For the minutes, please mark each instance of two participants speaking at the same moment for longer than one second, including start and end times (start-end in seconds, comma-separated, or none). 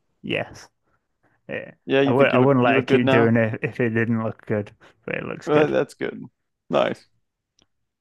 1.9-3.4